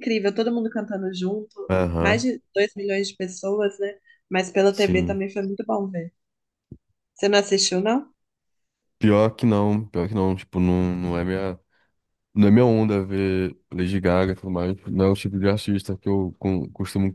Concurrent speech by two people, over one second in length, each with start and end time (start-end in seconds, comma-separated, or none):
none